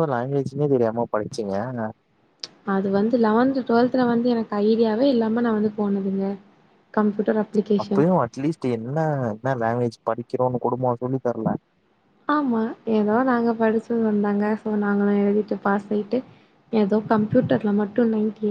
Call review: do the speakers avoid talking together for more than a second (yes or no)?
yes